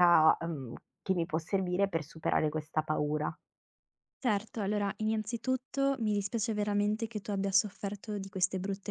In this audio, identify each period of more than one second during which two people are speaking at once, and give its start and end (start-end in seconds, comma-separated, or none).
none